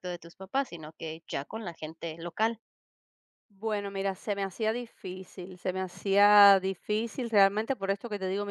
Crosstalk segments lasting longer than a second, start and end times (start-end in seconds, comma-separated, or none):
none